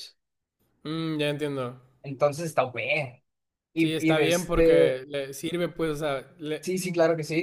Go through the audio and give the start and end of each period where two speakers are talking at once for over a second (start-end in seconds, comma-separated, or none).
3.8-5.0